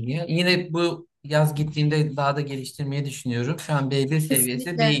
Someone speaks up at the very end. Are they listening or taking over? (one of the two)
listening